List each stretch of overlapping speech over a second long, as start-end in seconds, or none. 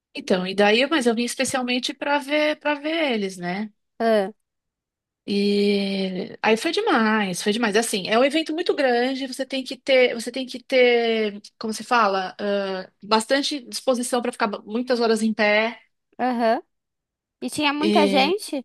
none